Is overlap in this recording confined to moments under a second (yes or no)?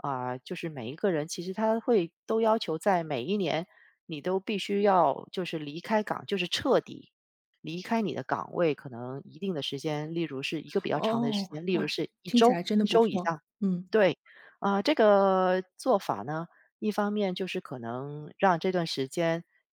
no